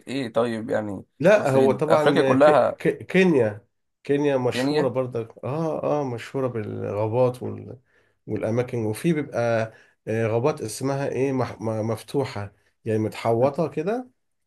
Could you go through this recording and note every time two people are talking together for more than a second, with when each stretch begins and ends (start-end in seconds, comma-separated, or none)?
1.2-2.7